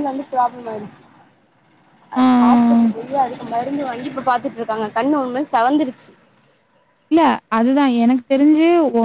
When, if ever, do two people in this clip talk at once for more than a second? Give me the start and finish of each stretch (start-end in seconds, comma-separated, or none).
none